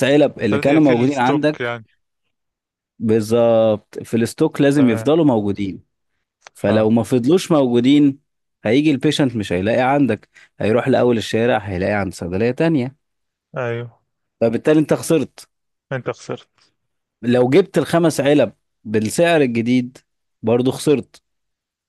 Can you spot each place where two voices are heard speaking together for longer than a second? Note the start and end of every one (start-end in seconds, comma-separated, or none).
0.5-1.8